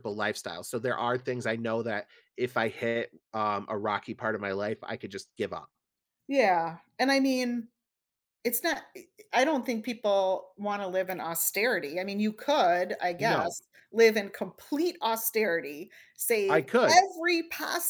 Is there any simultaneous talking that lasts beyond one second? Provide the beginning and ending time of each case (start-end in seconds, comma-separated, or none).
none